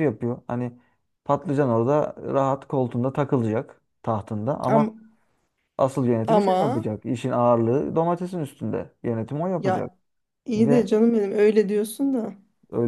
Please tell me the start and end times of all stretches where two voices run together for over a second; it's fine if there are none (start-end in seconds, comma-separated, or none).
none